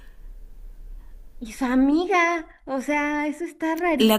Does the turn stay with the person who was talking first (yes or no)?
no